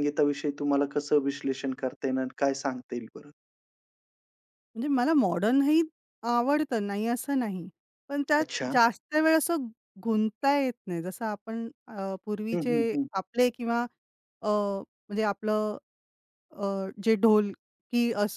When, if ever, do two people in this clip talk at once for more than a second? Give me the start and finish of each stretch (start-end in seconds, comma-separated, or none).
none